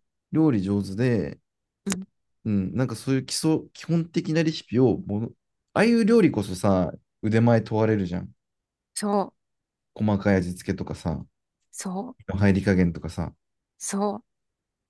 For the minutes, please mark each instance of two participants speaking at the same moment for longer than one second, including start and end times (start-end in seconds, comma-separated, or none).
none